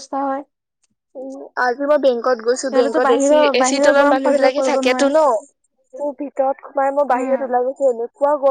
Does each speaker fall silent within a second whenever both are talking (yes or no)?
no